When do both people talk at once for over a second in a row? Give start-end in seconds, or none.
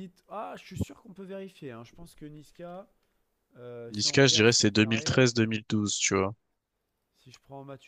3.9-5.3